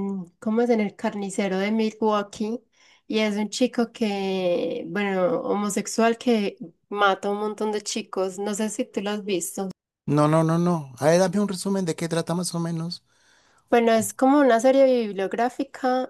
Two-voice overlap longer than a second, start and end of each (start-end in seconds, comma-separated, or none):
none